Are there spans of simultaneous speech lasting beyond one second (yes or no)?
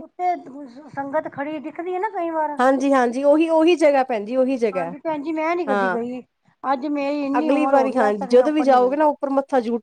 yes